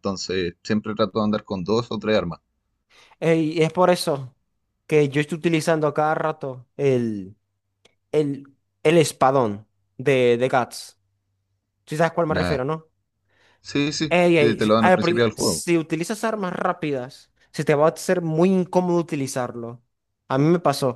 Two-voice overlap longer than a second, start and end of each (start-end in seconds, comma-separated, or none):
14.1-15.7